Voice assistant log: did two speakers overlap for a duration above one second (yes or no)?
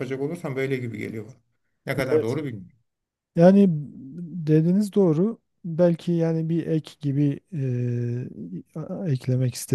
no